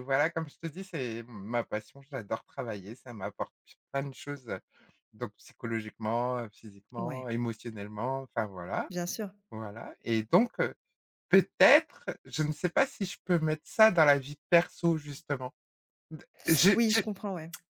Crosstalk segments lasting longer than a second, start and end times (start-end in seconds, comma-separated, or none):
none